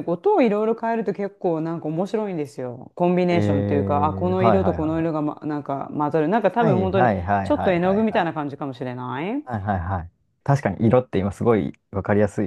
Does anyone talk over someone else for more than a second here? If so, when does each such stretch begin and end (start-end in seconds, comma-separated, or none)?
3.3-5.2, 6.6-8.3